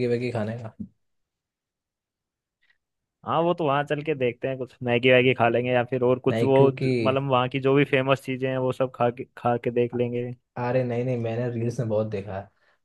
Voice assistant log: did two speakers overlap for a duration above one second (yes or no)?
no